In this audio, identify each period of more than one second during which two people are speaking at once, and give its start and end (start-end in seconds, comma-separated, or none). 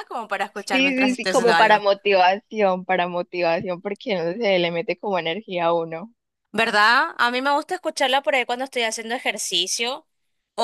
0.5-1.8